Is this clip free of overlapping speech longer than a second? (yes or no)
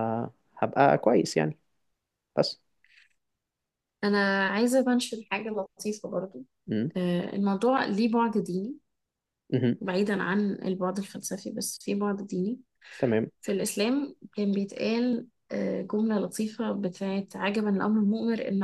yes